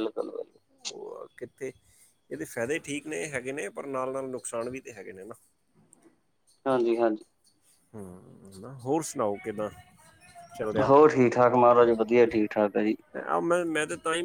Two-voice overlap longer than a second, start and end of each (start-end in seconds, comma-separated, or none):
none